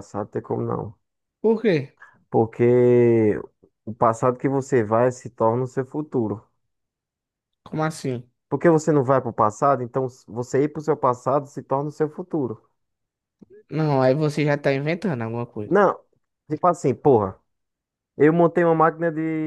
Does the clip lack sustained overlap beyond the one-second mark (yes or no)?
yes